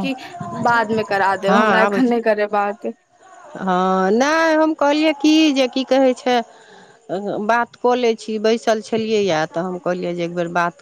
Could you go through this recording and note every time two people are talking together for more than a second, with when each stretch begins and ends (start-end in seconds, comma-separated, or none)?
none